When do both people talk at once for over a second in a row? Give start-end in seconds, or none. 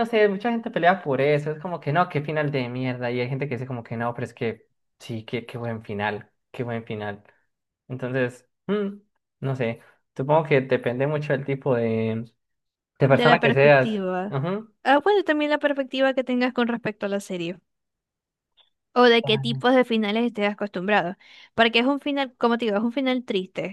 13.1-14.4